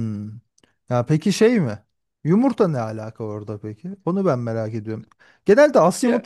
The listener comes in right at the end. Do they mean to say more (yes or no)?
no